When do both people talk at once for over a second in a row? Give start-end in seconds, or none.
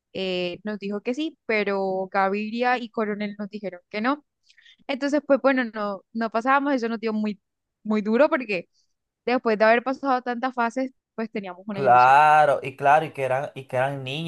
none